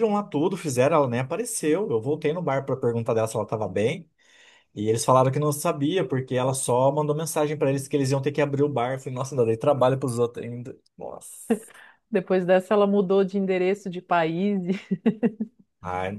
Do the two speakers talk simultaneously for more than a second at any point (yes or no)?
no